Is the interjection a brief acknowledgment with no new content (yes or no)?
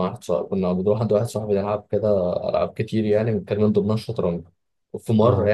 yes